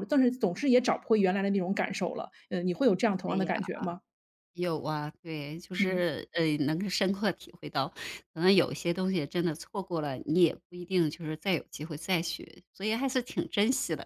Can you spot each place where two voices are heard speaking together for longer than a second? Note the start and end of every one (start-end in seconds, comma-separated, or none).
none